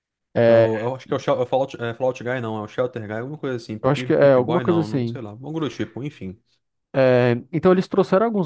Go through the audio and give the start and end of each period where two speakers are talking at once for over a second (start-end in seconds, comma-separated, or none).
3.8-5.2